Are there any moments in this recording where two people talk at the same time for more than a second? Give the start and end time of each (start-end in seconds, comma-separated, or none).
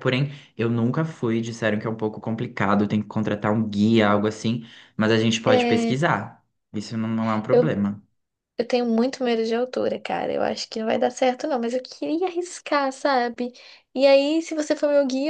none